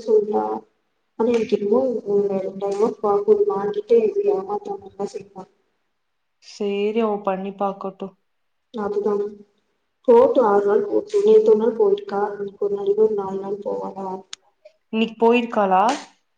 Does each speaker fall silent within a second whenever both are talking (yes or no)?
yes